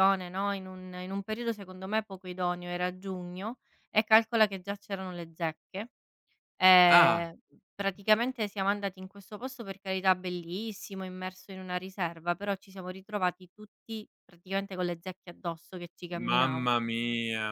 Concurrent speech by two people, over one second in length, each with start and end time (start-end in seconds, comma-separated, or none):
none